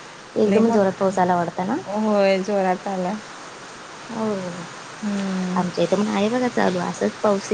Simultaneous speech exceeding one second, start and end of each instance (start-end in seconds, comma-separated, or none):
0.5-1.8